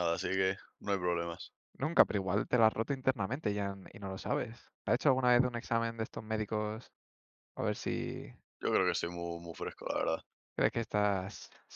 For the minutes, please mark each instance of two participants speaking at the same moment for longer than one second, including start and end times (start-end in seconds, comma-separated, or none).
none